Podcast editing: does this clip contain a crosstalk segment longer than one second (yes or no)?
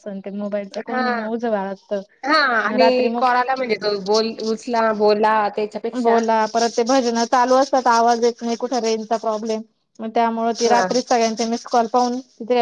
no